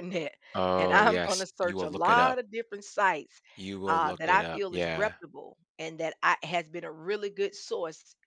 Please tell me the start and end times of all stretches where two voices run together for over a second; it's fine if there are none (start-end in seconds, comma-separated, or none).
0.8-2.4, 3.9-5.2